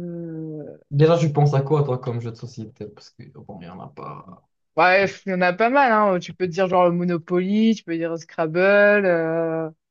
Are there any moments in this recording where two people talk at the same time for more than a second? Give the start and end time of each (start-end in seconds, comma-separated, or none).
none